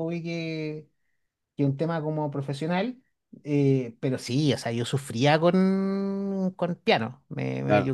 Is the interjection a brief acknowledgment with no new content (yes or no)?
yes